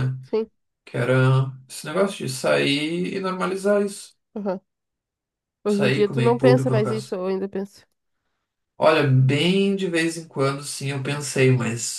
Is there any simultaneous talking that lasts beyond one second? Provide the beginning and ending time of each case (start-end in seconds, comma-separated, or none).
5.7-7.2